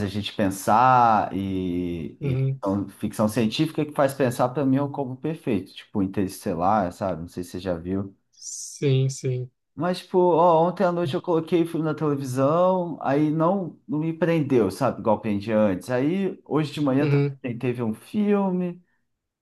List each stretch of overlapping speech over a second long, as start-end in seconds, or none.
none